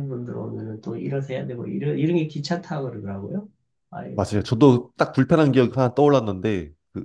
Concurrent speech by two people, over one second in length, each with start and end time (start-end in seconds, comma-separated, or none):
none